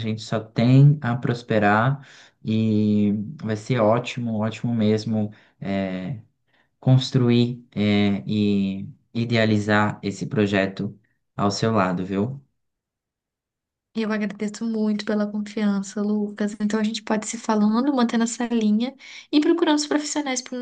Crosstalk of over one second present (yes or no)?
no